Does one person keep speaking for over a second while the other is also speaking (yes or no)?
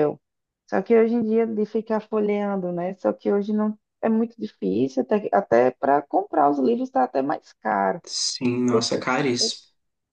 no